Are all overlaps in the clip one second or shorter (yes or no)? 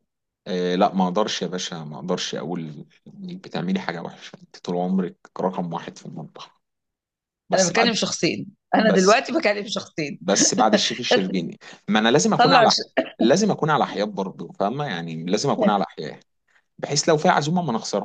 yes